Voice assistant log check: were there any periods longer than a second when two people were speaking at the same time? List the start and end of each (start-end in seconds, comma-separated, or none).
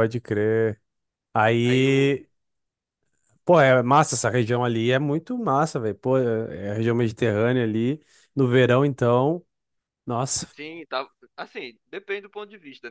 none